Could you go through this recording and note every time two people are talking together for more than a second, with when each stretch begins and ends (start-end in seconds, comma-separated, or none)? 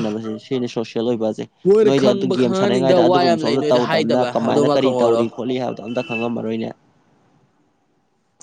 1.8-5.2